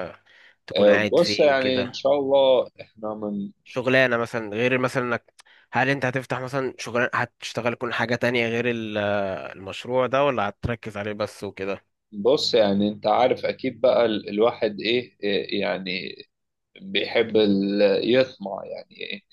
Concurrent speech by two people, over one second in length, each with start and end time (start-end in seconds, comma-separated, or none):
0.8-2.1